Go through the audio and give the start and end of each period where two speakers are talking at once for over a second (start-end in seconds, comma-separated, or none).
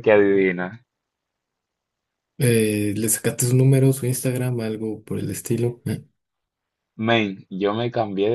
none